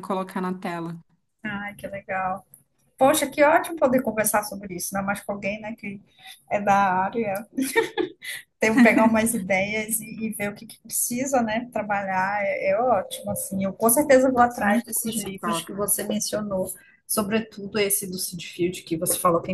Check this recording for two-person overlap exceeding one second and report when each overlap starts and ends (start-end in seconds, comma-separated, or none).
14.6-15.8